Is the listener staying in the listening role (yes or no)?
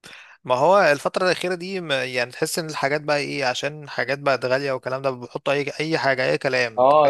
no